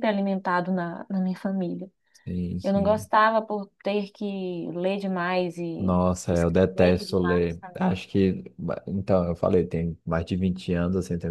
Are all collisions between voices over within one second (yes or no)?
no